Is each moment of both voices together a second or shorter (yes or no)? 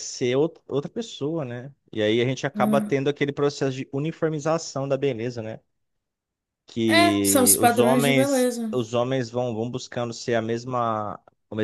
no